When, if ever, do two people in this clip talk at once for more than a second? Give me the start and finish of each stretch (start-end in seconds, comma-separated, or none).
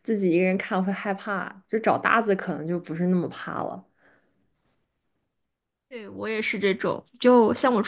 none